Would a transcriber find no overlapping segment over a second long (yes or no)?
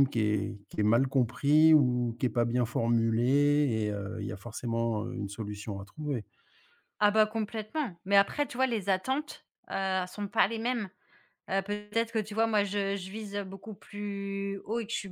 yes